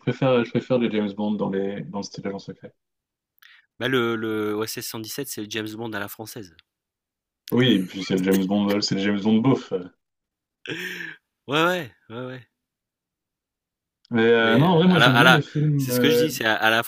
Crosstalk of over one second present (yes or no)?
yes